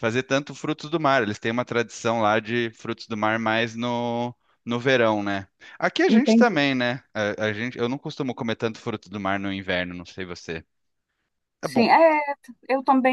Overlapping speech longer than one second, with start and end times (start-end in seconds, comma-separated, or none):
none